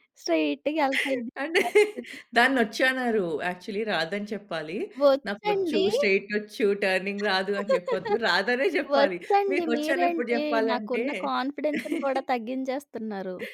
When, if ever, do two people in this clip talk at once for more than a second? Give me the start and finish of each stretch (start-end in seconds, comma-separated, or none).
8.9-11.0